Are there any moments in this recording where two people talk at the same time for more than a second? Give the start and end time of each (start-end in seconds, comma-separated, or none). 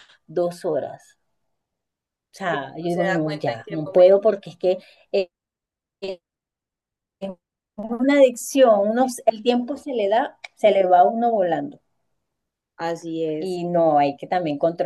2.5-4.2